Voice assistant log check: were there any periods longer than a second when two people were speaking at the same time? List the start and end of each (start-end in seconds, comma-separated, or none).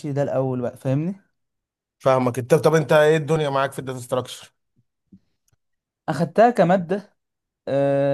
none